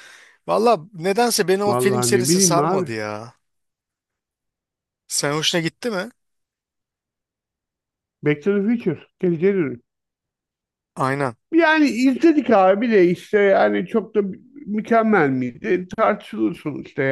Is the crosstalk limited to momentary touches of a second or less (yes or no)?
no